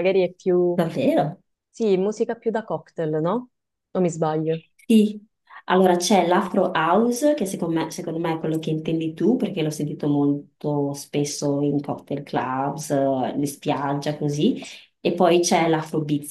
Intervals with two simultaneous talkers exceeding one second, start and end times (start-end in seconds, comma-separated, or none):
none